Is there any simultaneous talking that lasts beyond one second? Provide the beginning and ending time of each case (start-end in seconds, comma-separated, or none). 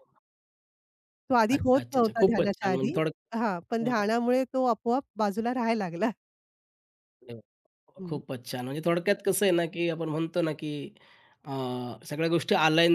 1.5-3.0